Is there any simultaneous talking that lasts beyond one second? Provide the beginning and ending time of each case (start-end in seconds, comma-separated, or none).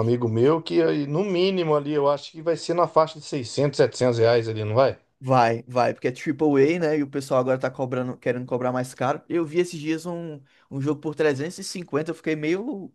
none